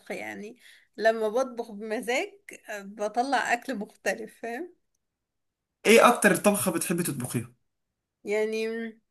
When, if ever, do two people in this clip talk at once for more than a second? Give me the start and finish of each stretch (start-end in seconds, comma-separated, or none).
none